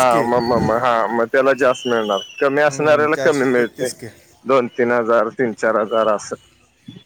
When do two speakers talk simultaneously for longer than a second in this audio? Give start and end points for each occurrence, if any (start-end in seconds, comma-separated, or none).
2.5-3.9